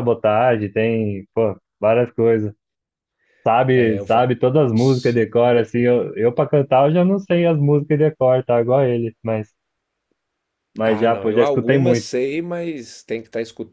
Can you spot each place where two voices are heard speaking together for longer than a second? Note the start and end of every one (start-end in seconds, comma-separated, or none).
10.8-12.1